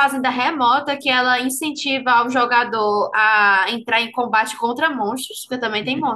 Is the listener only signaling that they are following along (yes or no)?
no